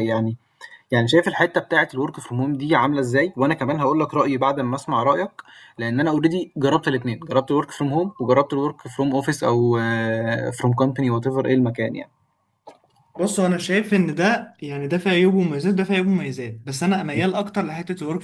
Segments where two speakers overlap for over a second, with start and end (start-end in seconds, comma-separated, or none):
none